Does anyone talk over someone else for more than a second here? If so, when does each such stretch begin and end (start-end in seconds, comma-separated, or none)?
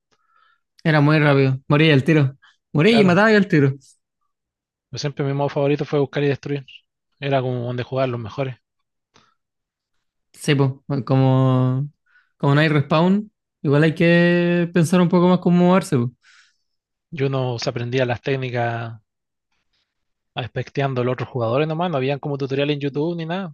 none